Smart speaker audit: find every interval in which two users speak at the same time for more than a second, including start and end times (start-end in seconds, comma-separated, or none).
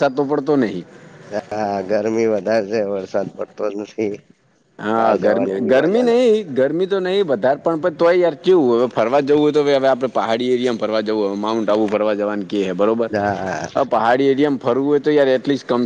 5.0-6.3